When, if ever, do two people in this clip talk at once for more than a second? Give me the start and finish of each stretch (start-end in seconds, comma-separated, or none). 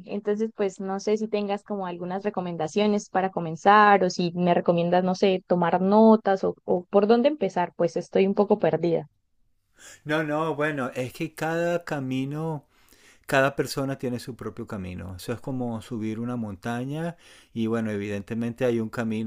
none